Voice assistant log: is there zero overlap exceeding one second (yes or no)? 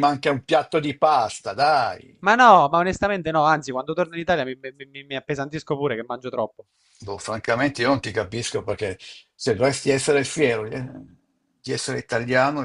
yes